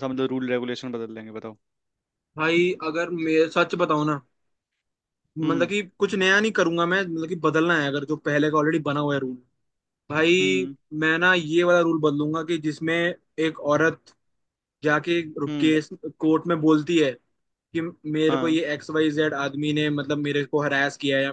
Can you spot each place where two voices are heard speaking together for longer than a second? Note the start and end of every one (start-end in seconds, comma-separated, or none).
none